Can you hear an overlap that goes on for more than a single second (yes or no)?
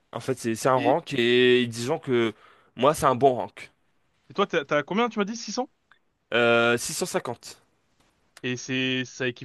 no